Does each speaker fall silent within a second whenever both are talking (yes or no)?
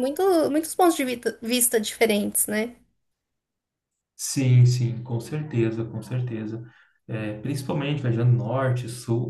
yes